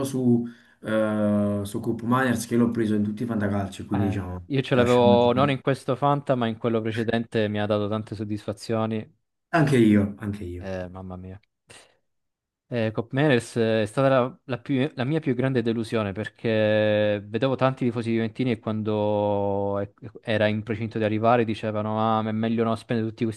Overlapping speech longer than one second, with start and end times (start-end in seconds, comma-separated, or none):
3.9-5.5